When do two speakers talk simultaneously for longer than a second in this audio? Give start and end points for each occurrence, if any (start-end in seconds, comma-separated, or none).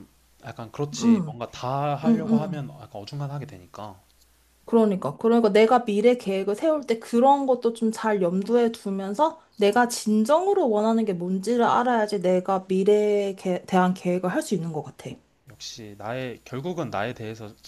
none